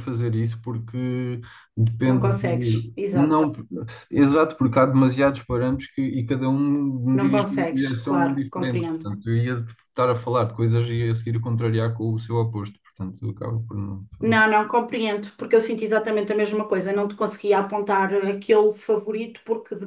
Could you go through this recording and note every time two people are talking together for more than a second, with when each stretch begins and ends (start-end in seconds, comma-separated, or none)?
2.0-3.5, 7.1-9.1